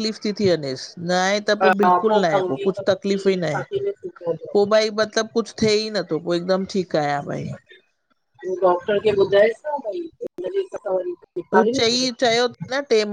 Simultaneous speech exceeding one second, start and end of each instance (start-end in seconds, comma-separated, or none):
1.6-3.6